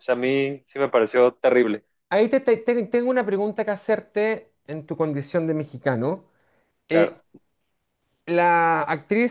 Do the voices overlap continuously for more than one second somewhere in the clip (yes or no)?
no